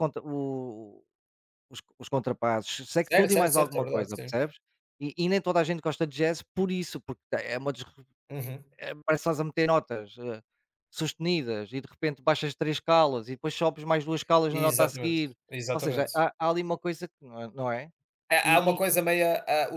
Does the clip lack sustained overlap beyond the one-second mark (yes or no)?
no